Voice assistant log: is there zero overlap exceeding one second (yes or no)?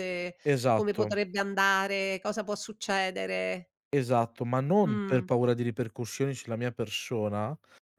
yes